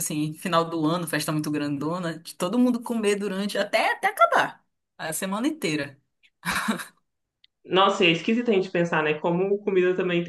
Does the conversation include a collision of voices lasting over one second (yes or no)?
no